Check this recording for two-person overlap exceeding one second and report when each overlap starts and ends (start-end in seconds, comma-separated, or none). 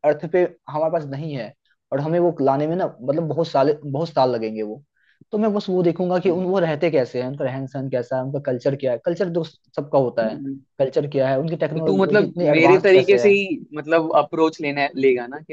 11.7-13.3